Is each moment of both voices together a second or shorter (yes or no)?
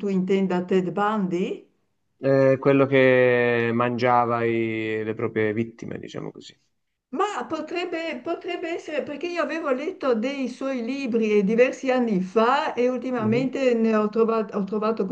yes